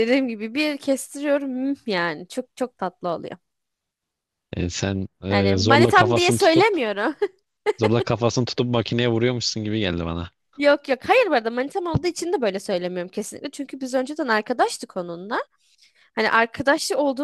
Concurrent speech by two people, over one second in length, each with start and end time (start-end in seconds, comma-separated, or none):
5.3-6.7